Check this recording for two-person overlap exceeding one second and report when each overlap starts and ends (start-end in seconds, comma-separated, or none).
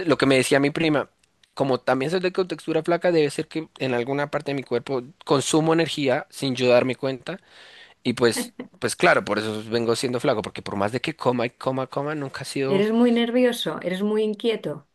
none